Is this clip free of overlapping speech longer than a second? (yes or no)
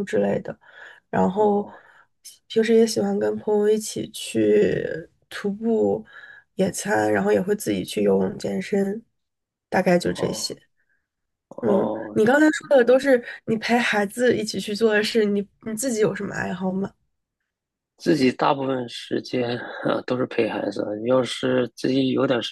yes